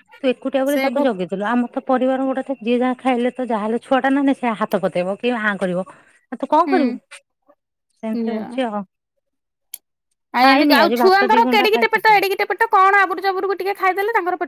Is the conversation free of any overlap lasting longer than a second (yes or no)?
no